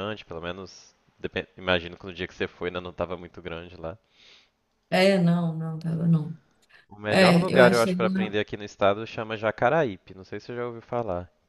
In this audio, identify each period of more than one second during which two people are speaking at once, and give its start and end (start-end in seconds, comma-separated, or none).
7.1-8.4